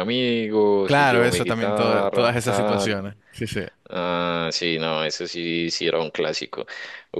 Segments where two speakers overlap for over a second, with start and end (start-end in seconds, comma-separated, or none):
0.8-3.0